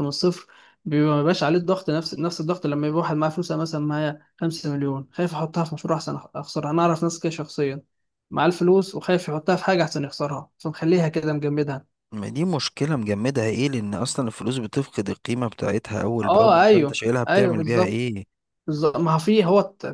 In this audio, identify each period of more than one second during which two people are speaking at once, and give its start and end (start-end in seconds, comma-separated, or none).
16.2-18.1